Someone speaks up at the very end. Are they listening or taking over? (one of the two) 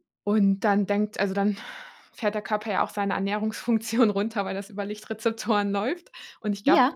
listening